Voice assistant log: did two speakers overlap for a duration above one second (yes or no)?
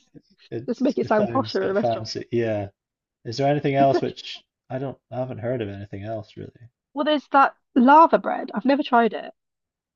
yes